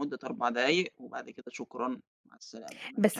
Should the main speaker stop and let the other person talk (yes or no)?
yes